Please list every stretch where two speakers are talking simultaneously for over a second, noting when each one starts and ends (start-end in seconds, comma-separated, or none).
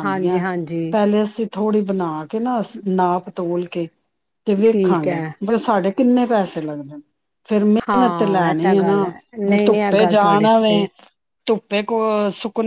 7.9-10.9